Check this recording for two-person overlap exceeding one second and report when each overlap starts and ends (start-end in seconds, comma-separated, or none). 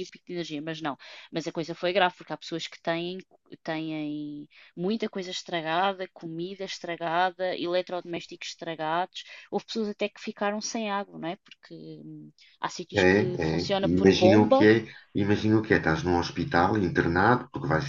12.9-14.7